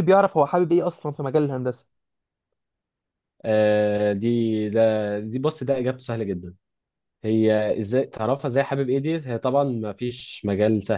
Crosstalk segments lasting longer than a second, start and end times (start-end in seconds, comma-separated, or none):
none